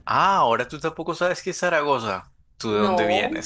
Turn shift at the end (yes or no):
no